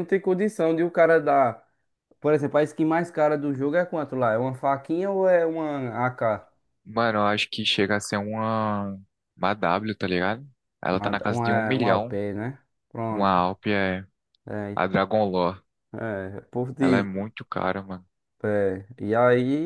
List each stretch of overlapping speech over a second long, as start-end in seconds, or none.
10.9-12.2